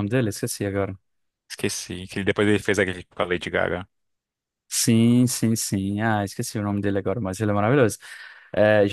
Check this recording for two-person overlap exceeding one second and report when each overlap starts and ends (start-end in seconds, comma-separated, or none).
none